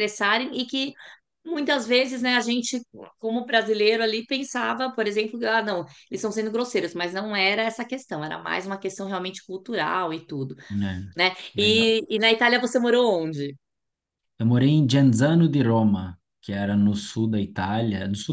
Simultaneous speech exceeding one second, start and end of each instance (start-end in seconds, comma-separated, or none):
none